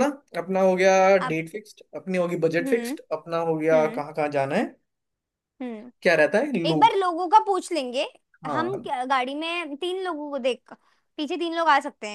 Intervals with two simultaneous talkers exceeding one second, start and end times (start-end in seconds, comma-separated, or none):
none